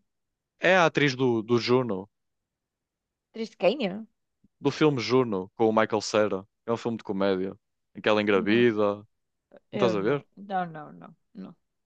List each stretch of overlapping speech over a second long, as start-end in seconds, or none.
none